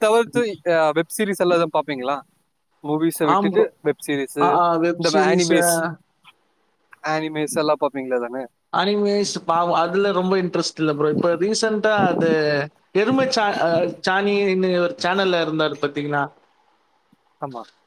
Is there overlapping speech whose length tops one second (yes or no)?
no